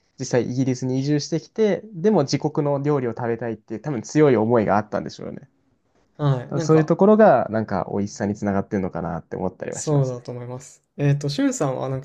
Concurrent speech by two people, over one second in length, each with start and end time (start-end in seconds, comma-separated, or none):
none